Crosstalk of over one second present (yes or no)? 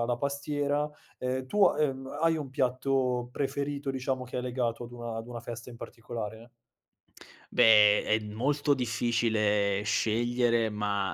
no